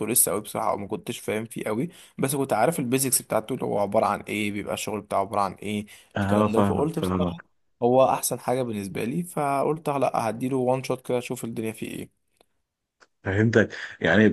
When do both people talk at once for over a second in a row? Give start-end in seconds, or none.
6.2-7.4